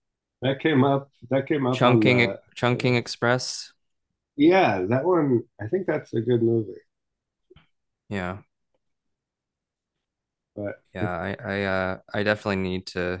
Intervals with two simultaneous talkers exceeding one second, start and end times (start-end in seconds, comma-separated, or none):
1.7-3.3